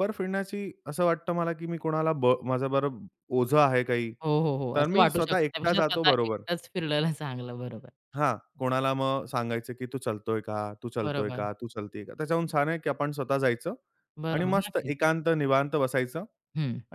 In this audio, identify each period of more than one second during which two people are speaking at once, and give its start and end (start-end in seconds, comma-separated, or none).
4.8-6.4